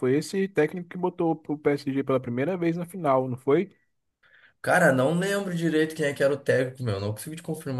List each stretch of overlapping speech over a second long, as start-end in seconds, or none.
none